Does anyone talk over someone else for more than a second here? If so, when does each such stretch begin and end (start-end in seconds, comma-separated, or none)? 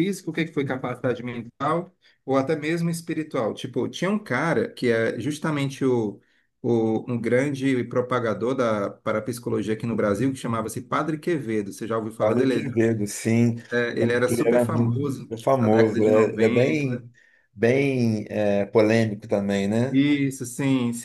14.0-17.0